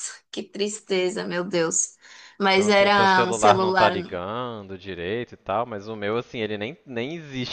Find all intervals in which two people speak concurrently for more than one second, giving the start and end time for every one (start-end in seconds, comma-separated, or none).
2.5-4.2